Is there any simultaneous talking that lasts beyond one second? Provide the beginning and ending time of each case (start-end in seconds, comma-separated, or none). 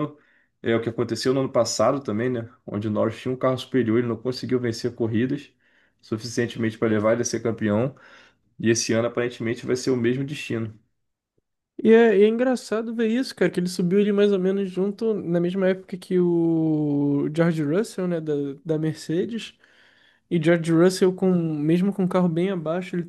none